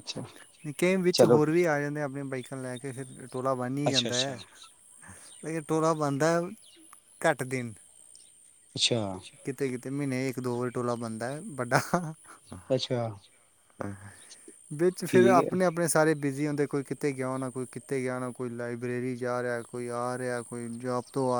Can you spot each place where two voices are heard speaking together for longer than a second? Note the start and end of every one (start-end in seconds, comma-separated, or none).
none